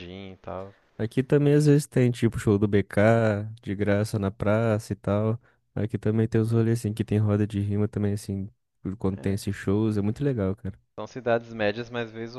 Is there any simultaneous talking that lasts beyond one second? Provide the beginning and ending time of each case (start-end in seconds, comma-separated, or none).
none